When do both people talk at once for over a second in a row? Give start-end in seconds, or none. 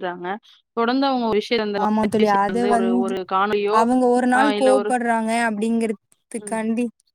none